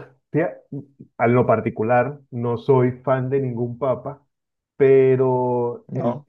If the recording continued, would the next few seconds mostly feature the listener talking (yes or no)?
no